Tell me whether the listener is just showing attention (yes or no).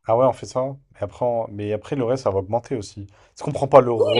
no